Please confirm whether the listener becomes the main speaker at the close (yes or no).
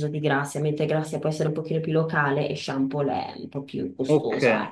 yes